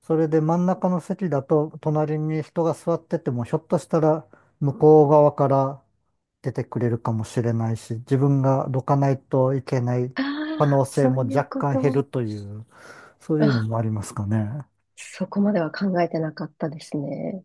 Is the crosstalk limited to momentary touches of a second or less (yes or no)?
no